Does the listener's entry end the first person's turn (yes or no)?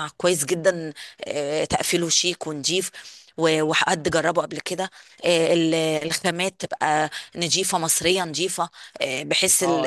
yes